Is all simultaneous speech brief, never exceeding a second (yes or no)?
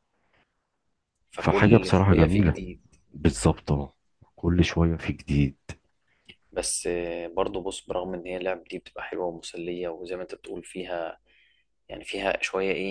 no